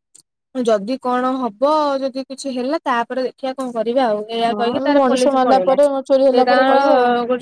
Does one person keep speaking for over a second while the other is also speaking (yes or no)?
yes